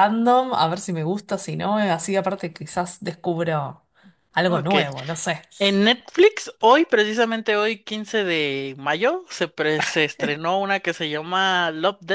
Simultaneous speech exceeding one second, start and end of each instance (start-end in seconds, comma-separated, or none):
none